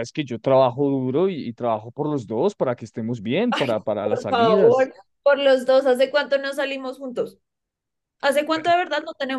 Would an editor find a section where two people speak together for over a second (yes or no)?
yes